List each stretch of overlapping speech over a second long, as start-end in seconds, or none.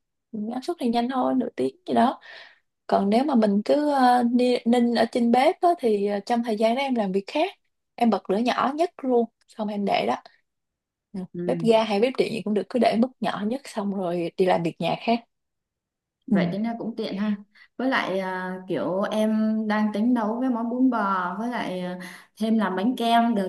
none